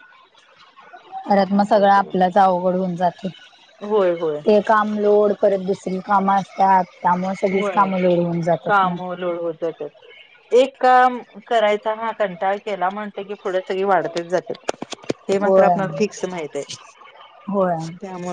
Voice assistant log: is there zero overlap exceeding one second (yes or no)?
yes